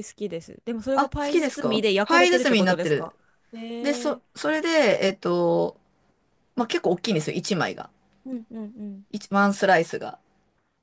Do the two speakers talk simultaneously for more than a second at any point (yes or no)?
yes